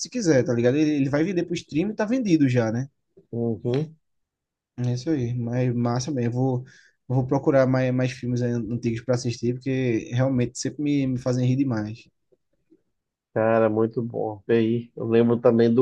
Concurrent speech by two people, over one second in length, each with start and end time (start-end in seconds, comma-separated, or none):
none